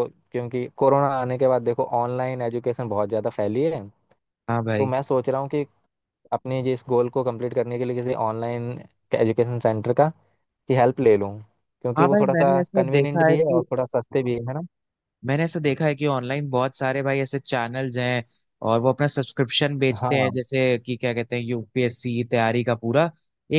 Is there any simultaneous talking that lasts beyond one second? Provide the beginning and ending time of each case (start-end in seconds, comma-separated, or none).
12.0-13.7